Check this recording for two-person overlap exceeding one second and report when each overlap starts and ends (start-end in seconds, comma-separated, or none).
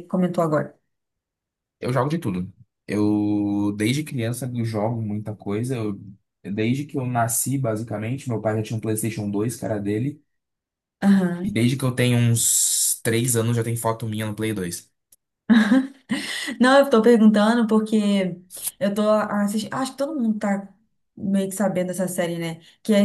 none